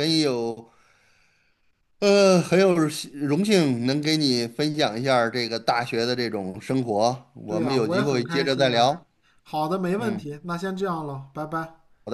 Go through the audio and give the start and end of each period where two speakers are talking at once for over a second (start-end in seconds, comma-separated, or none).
7.5-9.0